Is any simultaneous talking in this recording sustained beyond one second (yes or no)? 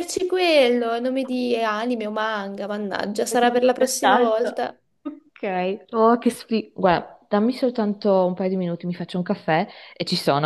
yes